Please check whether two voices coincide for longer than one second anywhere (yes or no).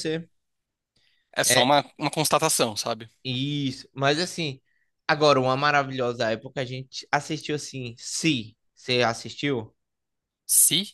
no